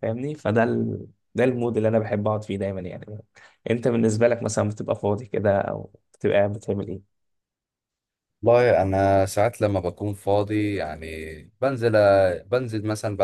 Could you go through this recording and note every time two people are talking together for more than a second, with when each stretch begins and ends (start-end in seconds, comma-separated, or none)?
none